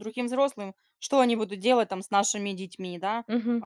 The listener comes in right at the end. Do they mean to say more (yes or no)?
yes